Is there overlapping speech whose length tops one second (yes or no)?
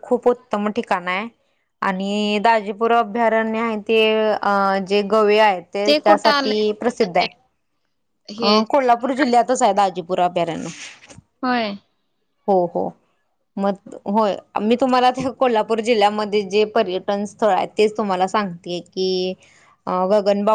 yes